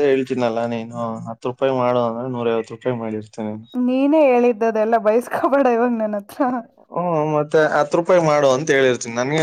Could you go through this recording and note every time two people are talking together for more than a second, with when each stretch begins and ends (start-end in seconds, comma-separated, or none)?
none